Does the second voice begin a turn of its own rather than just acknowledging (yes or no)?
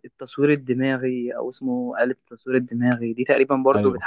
no